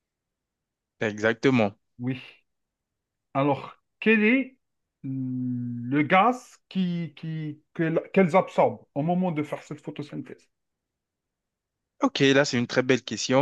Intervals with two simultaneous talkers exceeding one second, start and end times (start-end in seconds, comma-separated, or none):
none